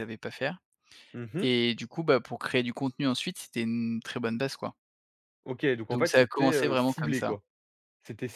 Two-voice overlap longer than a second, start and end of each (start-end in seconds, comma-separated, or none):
5.9-7.3